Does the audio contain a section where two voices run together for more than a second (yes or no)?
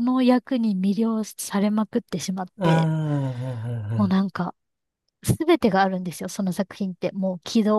no